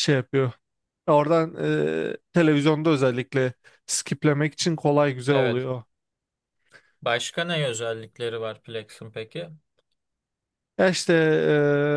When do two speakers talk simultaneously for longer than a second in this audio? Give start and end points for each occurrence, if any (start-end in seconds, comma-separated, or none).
none